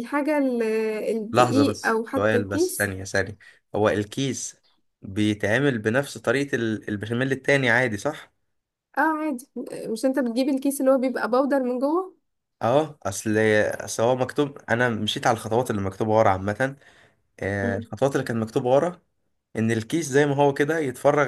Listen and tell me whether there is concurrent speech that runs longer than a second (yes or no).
yes